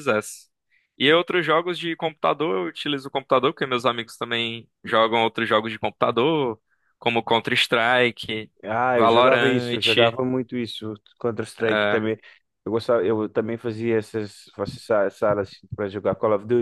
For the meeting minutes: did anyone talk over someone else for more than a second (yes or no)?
yes